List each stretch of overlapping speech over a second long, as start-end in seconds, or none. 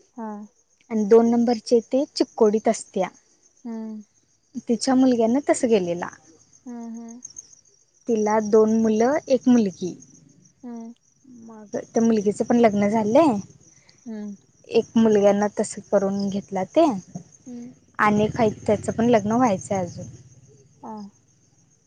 none